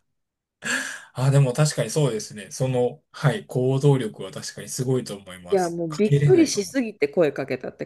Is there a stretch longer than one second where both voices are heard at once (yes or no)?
yes